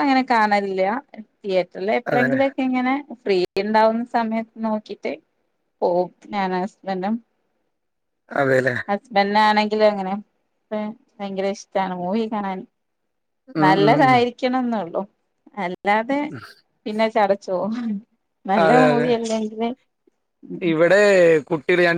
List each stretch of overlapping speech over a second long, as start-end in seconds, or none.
none